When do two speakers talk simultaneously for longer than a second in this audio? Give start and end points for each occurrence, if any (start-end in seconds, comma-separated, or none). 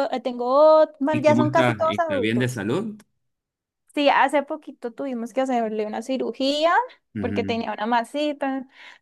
1.1-2.6